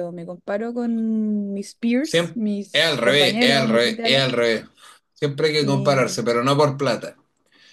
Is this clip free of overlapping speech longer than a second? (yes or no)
no